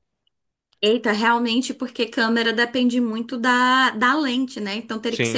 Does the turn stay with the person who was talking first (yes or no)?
yes